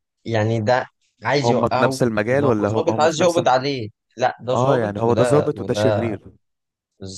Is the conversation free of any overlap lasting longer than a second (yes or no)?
no